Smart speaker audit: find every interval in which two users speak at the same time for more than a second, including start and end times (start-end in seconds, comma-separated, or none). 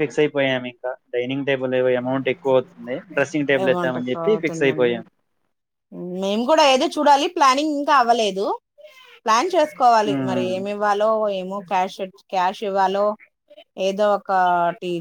3.6-4.9